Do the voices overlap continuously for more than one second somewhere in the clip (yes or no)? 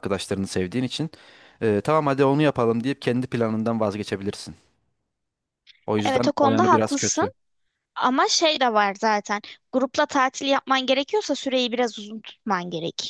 yes